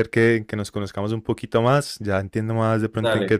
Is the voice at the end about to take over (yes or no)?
no